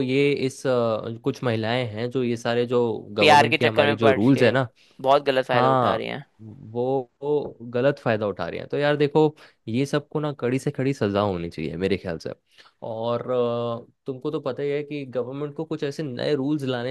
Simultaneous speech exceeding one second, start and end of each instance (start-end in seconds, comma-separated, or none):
3.2-4.5